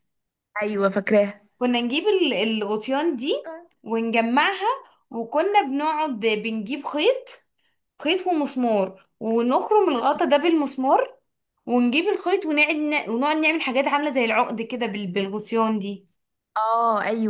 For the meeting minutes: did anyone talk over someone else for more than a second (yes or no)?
no